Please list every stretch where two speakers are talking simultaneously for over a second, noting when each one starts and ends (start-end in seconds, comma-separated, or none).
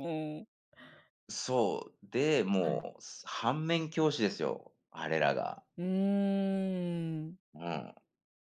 none